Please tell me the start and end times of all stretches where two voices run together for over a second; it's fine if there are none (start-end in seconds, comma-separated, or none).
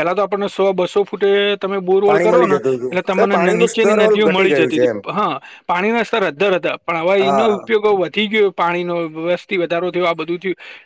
2.1-5.0